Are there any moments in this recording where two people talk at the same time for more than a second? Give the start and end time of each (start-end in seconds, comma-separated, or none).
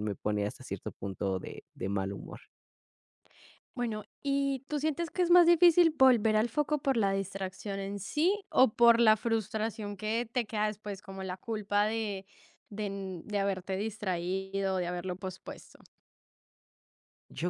none